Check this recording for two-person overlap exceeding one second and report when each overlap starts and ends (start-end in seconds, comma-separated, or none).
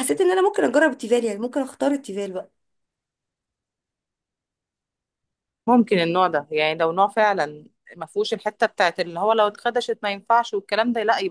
none